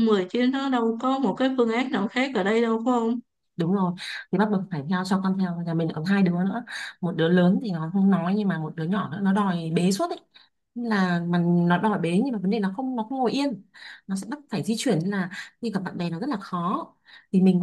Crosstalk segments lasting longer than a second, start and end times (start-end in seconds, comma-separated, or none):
none